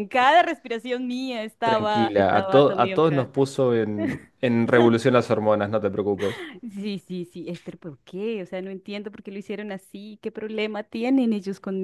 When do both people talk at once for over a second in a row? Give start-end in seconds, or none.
1.7-3.3